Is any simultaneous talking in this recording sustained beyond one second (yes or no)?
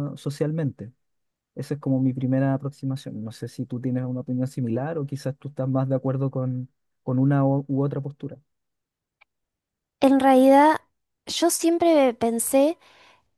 no